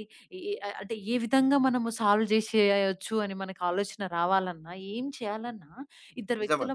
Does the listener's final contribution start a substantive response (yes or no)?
no